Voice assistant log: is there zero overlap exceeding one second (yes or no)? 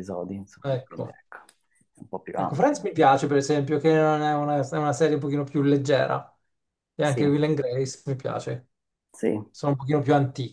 yes